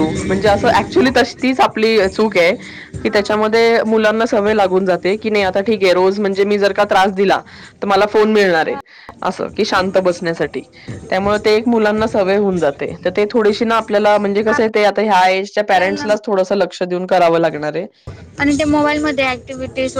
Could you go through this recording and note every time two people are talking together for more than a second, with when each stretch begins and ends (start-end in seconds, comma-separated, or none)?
none